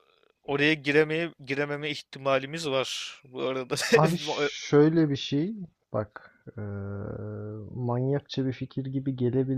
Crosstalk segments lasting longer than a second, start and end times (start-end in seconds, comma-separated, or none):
none